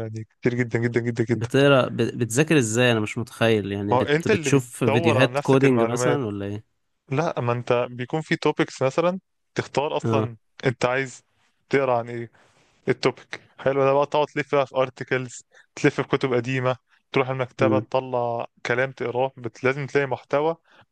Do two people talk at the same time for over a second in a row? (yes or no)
yes